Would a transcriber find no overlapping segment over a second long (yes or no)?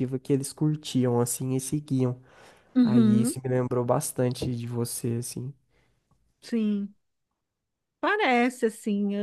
yes